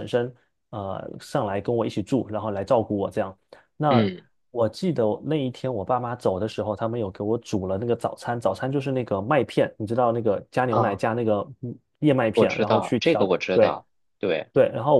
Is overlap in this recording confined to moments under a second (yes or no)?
no